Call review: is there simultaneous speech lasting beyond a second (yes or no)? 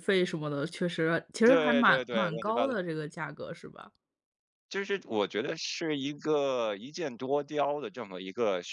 yes